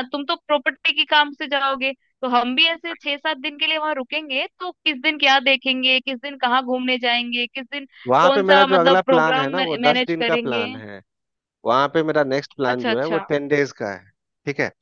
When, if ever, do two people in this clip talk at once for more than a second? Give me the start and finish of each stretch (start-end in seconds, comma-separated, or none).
8.2-10.7